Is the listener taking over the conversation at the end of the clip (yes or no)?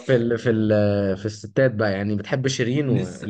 yes